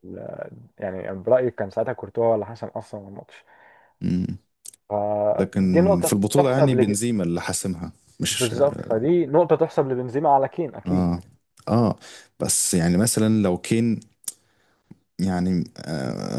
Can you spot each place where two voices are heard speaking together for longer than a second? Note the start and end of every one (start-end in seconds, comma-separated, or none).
5.5-6.9